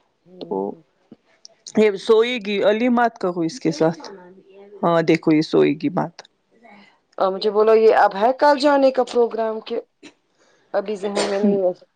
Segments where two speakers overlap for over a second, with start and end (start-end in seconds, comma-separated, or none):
none